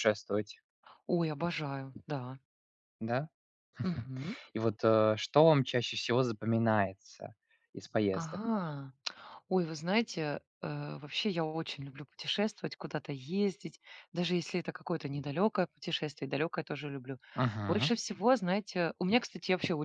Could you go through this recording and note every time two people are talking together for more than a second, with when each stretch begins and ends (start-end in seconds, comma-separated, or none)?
none